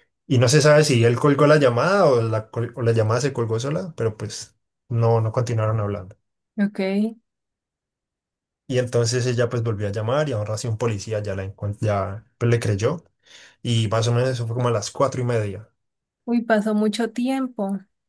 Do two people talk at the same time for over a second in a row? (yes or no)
no